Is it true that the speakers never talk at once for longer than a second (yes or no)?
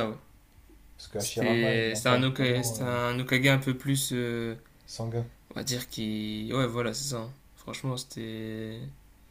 no